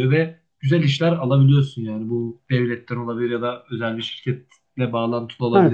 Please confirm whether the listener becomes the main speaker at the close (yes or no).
yes